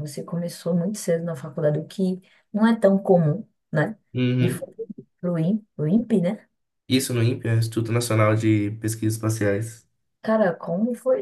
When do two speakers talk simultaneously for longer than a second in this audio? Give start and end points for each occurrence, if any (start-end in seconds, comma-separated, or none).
none